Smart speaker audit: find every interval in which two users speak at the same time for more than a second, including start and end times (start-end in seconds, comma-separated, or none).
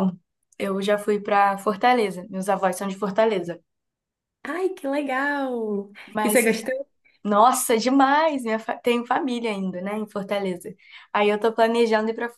none